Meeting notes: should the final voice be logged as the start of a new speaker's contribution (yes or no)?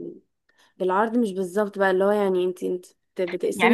yes